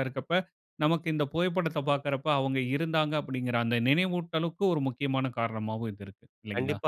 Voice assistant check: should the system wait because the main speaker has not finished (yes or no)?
no